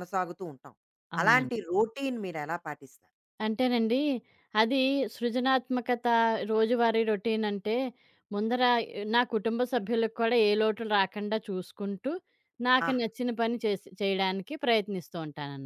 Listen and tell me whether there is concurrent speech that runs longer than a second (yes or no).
no